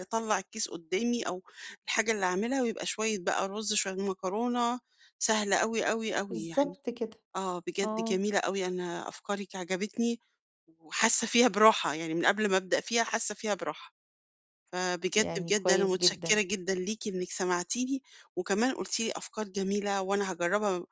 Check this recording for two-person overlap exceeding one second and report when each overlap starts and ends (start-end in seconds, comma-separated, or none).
15.1-16.4